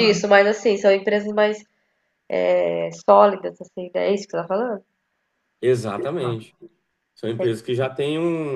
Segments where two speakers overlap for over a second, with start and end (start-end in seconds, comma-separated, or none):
none